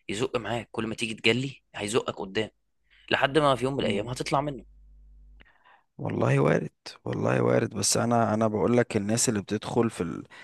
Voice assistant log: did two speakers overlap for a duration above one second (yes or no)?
no